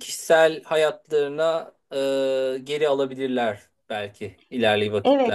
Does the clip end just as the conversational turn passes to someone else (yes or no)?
yes